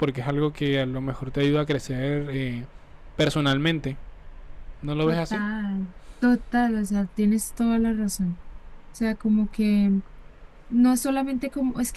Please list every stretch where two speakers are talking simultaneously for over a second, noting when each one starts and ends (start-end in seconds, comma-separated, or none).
none